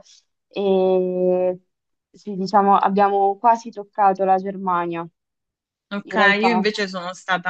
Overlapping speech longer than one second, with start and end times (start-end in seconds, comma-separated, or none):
none